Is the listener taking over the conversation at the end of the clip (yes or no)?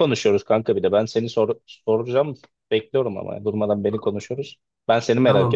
yes